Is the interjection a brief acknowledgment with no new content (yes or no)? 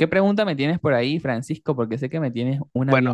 no